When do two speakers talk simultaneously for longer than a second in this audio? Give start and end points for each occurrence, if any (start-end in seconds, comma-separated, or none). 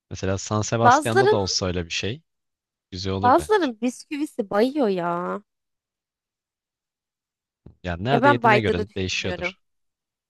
8.1-9.6